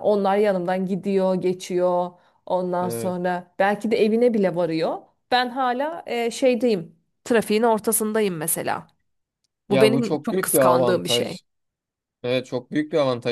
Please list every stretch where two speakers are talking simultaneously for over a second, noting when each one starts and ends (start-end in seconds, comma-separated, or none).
9.7-11.4